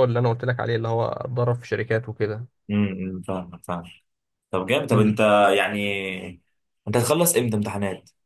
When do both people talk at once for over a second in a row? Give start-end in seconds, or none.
none